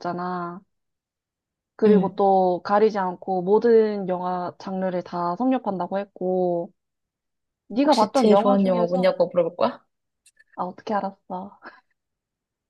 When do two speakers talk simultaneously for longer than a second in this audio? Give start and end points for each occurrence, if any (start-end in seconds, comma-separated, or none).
7.8-9.2